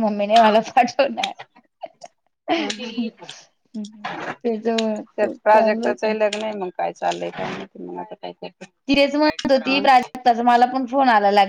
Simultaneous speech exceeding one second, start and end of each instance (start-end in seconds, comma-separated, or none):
none